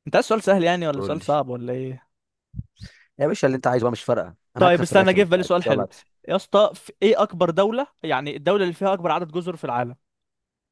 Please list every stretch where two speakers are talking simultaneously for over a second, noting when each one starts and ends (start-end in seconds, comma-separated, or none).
4.6-5.9